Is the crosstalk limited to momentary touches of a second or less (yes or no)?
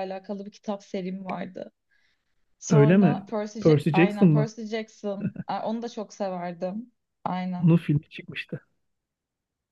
no